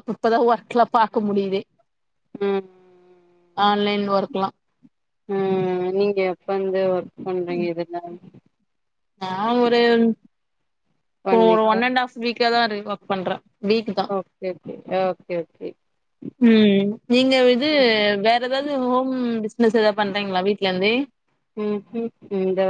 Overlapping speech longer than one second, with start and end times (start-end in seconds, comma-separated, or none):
none